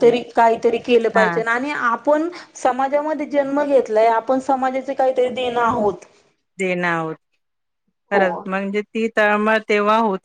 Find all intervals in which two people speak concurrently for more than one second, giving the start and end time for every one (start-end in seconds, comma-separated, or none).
none